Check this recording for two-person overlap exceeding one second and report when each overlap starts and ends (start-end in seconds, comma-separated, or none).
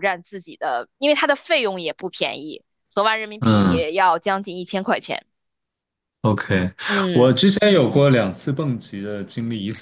none